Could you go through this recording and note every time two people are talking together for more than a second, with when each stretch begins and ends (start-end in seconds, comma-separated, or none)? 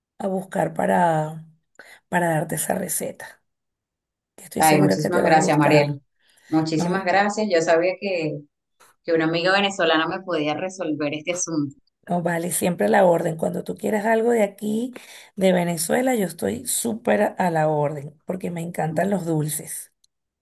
4.6-6.0